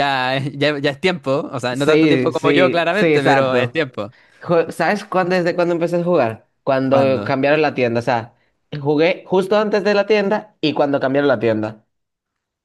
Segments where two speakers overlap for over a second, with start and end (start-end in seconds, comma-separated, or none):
1.7-3.8